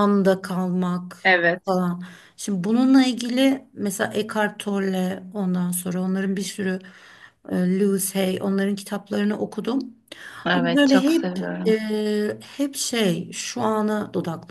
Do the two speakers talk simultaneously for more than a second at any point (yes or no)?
yes